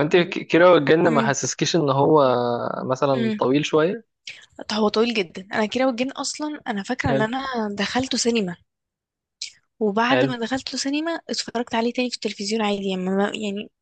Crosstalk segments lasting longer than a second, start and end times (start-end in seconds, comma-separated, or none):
none